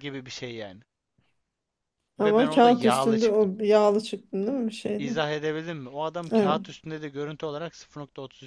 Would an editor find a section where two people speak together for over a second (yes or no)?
yes